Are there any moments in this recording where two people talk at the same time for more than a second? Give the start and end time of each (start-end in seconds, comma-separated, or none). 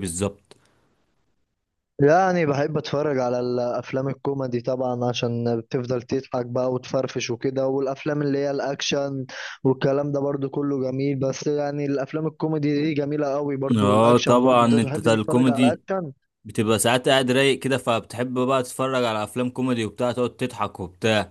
13.8-15.8